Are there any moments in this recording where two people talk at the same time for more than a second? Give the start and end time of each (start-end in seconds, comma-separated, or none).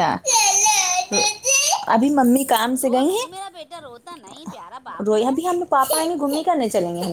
none